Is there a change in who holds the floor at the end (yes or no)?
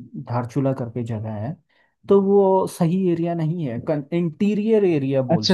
yes